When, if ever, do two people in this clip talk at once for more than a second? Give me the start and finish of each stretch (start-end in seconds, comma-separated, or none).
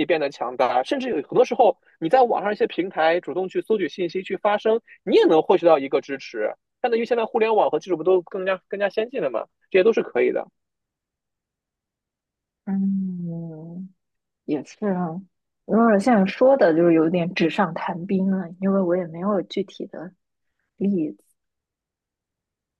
none